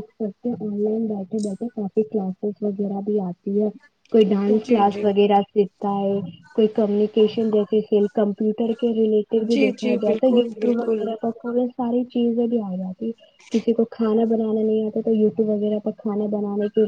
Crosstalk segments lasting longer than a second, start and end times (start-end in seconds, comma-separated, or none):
9.5-11.1